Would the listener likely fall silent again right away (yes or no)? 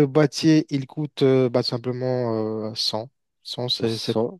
no